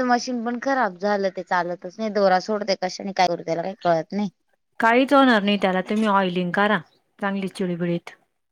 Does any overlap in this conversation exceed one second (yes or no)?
no